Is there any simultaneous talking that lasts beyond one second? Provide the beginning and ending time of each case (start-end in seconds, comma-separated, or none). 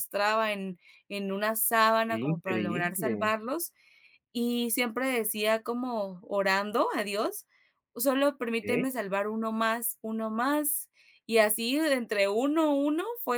2.0-3.3